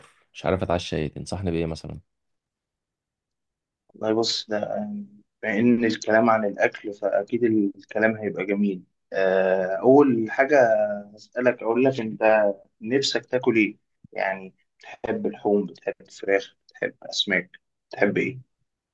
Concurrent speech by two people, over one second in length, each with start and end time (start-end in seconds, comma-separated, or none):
none